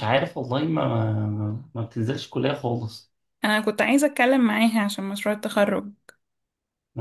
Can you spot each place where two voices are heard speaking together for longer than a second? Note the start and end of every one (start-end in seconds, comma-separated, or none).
none